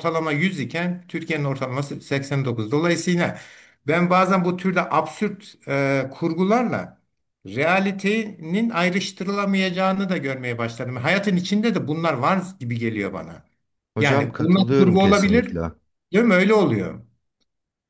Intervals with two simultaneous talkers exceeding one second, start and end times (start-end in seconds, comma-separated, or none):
14.0-15.6